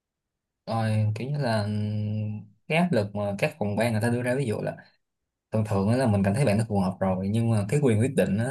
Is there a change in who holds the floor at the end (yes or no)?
no